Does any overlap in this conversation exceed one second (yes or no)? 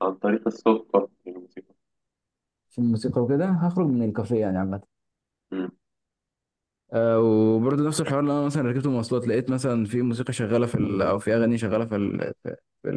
no